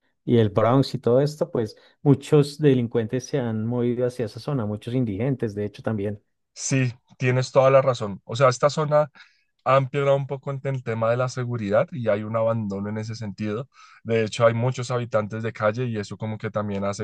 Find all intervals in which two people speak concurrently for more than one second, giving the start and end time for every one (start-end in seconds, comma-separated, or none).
none